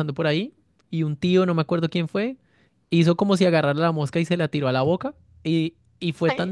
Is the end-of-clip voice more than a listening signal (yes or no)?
no